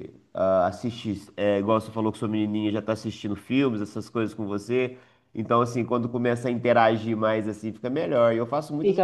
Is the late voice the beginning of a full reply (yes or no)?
yes